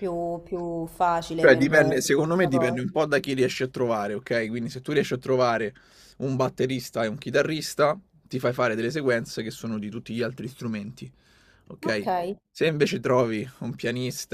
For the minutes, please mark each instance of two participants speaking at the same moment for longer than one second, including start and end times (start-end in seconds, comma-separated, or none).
1.4-2.8